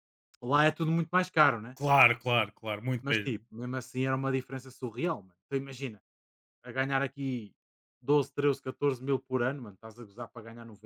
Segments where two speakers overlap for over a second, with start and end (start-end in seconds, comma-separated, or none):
none